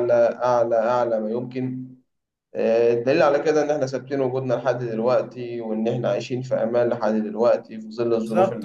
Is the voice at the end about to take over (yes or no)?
yes